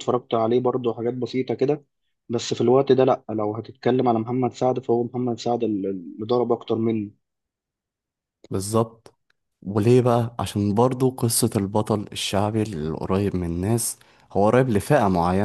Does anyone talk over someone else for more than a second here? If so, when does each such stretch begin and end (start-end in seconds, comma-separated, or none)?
none